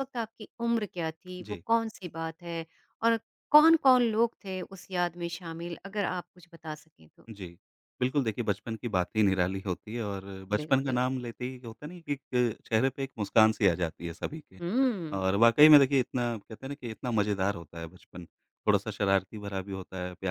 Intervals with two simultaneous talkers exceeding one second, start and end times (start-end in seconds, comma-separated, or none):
none